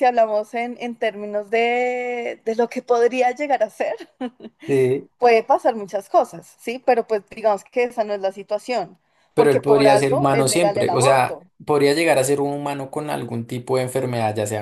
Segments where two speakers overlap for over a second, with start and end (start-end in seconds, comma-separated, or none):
9.3-11.4